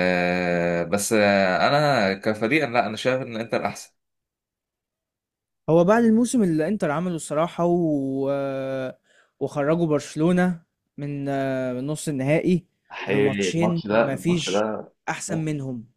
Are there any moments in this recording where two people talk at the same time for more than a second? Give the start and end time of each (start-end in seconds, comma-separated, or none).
13.1-14.7